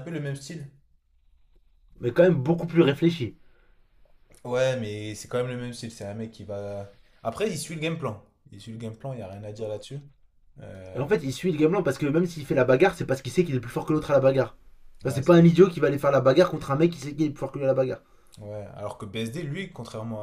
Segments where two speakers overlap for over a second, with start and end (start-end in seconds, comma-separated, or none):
none